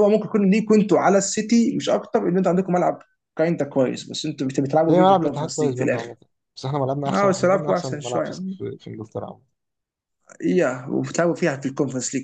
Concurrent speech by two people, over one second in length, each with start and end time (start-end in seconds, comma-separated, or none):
4.9-6.1, 7.1-8.4